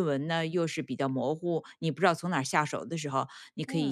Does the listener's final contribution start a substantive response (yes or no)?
no